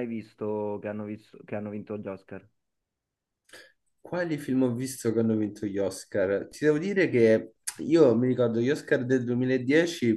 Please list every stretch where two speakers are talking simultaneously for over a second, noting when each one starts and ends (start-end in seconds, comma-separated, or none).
none